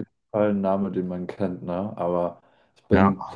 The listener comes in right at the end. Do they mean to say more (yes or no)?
no